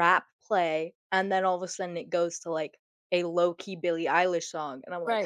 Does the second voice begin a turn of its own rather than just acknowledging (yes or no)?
no